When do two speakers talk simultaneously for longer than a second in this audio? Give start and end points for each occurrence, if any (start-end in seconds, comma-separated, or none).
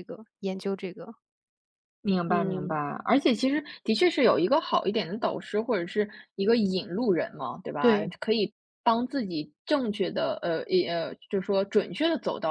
none